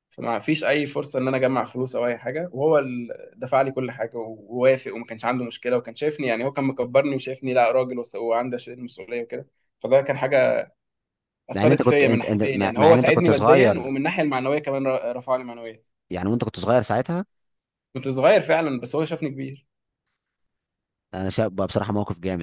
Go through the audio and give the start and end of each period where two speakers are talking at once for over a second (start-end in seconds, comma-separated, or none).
11.5-13.9